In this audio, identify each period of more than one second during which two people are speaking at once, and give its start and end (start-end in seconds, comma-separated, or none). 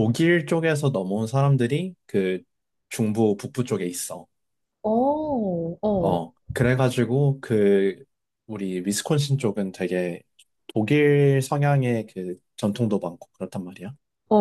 none